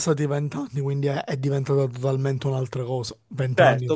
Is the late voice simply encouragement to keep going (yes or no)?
no